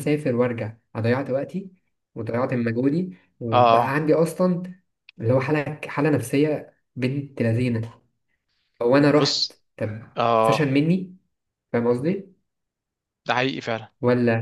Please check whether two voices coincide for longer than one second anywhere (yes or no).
no